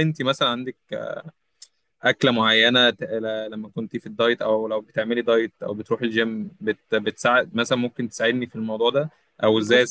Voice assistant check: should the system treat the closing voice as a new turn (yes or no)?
no